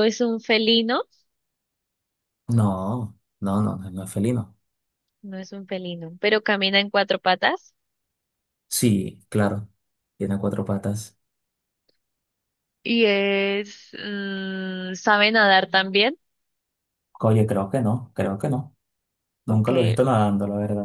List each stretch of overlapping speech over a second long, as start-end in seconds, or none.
none